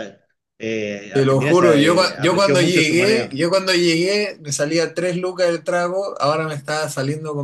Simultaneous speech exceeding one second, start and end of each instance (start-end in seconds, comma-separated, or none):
1.1-3.4